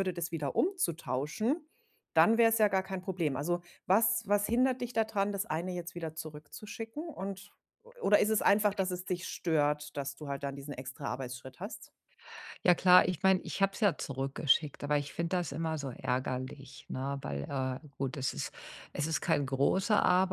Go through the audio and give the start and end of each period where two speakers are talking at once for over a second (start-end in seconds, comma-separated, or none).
none